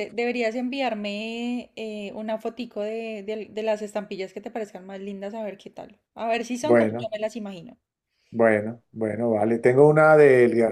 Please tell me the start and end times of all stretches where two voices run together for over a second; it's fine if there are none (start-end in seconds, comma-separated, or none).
none